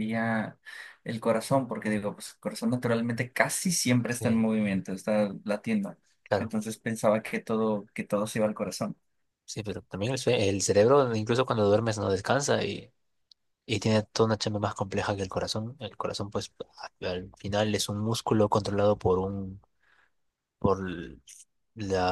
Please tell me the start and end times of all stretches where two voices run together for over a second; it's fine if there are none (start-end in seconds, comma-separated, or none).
none